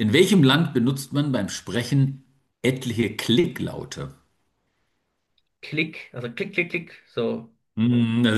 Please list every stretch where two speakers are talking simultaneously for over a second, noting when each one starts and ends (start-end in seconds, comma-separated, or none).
none